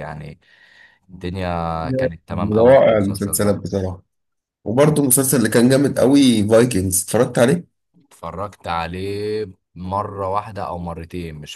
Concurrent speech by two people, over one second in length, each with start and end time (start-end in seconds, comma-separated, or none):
2.3-3.6